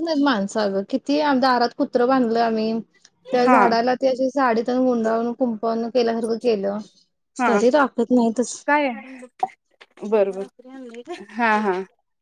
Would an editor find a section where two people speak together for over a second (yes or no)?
no